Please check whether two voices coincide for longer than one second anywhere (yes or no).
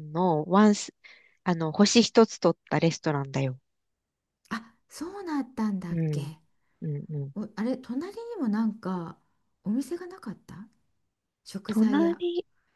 no